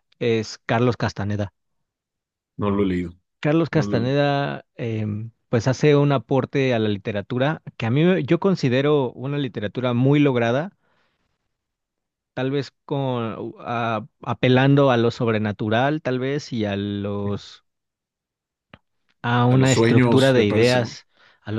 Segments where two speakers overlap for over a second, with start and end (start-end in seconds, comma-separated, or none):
19.5-21.0